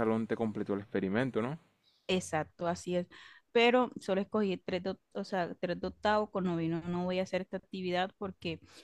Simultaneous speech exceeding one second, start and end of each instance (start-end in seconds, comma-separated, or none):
none